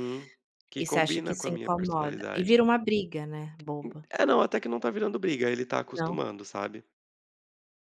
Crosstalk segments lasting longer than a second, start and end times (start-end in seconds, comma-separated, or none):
0.8-2.5